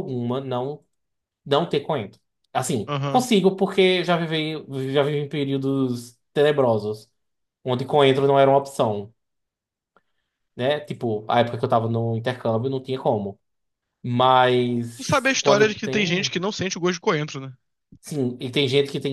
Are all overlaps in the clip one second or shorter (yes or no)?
no